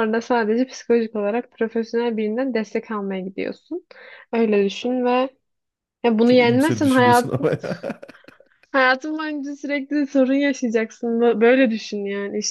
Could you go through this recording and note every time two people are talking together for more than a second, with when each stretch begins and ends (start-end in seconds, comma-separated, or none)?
6.2-7.5